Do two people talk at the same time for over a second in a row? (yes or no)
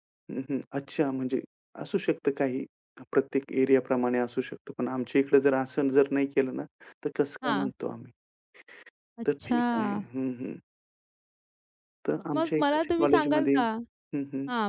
yes